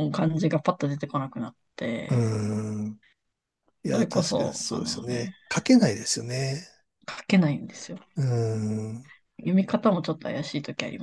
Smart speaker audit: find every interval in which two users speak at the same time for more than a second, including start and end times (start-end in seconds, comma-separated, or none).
3.8-5.3